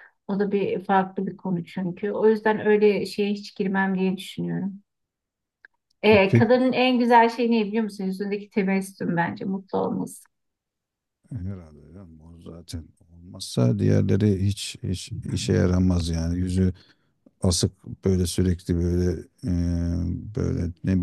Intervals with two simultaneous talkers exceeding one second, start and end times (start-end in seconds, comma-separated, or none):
none